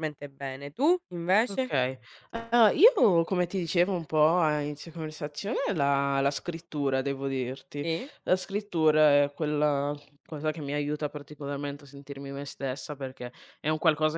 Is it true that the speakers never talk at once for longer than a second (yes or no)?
yes